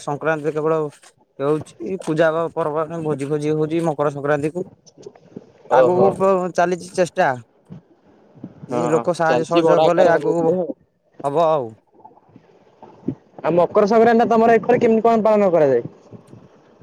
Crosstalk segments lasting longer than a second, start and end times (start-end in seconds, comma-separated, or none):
8.7-10.5